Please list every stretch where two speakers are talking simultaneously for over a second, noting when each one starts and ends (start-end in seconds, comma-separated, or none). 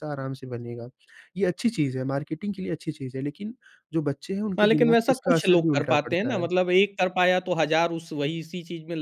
4.6-6.5